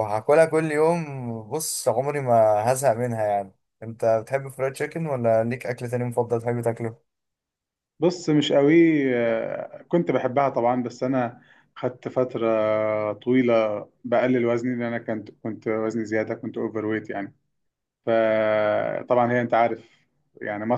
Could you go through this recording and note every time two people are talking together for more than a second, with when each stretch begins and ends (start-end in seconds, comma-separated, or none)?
none